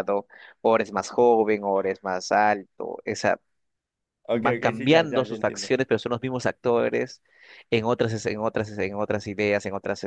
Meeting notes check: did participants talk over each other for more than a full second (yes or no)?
yes